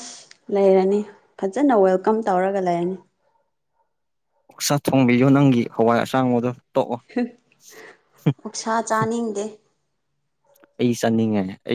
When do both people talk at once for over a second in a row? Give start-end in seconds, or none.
none